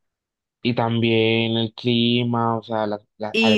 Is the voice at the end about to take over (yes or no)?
yes